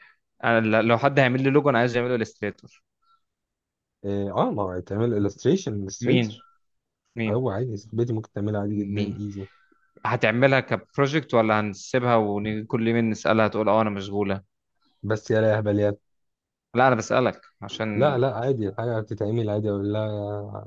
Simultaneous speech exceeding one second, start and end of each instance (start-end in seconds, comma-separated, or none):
none